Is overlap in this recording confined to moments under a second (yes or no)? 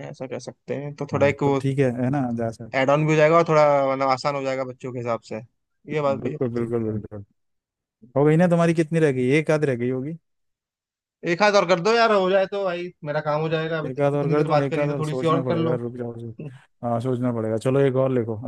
no